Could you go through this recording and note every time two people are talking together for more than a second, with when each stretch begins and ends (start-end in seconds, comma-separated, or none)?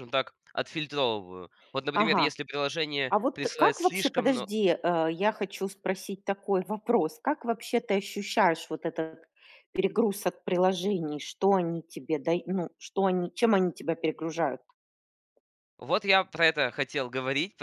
3.1-4.5